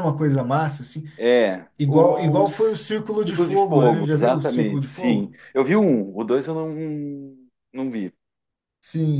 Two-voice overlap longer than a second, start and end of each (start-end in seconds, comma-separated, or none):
1.8-5.4